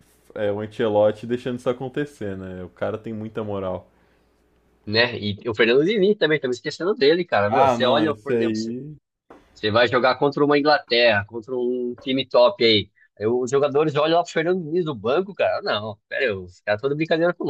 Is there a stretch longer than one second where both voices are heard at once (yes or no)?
yes